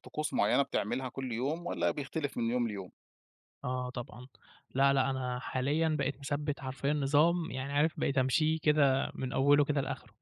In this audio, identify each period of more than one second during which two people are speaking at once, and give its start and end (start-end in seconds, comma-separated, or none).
none